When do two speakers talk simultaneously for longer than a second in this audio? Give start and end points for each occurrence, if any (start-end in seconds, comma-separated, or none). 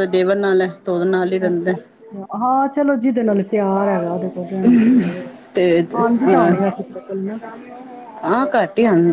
none